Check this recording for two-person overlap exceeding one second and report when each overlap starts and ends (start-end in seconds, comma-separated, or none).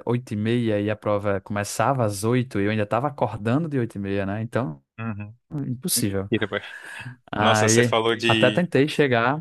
7.4-8.7